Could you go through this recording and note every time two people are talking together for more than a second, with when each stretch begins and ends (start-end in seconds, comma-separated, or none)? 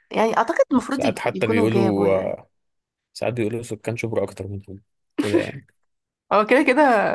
0.9-2.4